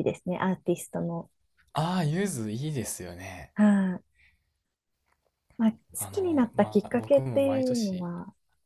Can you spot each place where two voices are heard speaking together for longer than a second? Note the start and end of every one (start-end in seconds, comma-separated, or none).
5.9-8.1